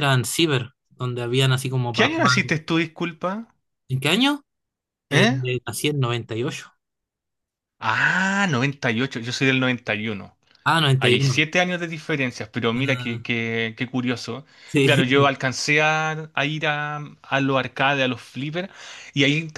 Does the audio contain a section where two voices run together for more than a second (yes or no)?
no